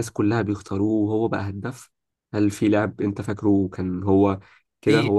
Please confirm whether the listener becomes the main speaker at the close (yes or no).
yes